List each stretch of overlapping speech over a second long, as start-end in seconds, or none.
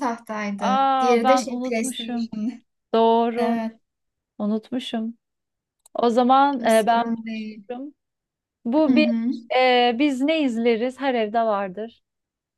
0.6-2.3